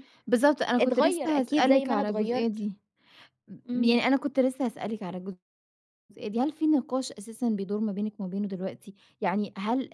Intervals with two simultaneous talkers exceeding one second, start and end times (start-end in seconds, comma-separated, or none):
0.8-2.6